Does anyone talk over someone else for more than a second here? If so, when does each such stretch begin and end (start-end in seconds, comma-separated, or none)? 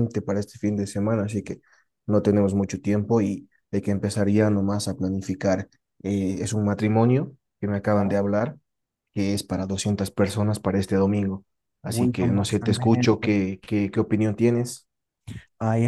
11.8-13.3